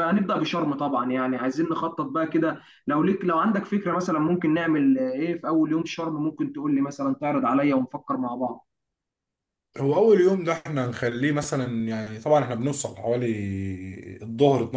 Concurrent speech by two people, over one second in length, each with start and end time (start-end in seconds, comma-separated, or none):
none